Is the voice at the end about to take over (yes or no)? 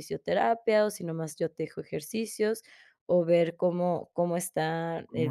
yes